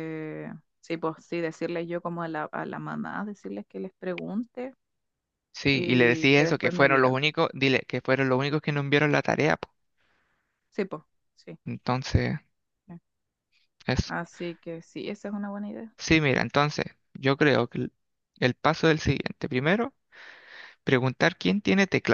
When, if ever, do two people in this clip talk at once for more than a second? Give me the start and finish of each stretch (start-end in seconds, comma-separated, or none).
5.7-7.2